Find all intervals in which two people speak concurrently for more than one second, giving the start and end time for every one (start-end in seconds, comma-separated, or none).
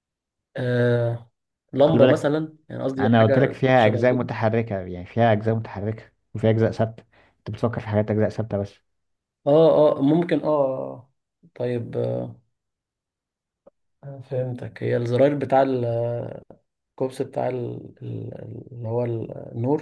3.0-4.2